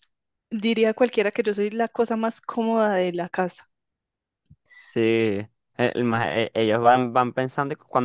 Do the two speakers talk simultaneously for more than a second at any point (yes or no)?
no